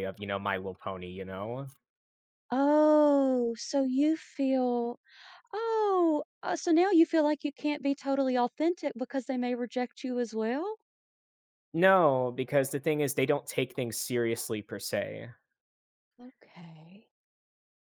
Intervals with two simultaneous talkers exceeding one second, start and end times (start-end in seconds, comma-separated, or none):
none